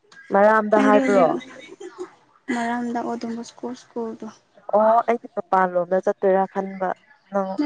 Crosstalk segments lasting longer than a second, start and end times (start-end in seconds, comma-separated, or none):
none